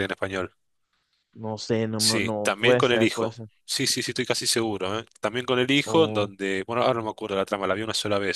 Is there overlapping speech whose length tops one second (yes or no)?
yes